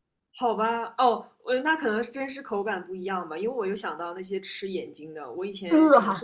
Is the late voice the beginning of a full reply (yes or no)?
no